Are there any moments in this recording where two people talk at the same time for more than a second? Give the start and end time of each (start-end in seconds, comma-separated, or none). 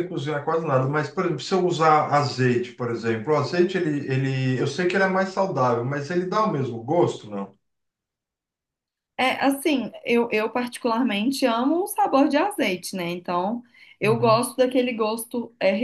none